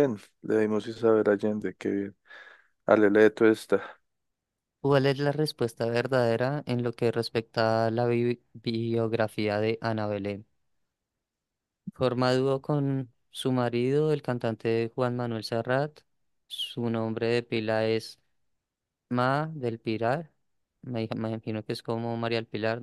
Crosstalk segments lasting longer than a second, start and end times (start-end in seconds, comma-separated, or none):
none